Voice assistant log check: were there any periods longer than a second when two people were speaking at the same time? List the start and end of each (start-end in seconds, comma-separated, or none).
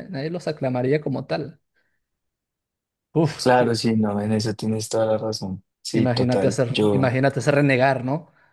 5.9-7.1